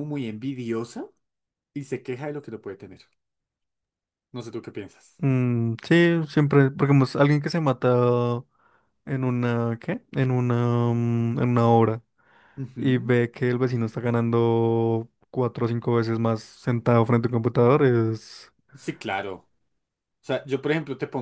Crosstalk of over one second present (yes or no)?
no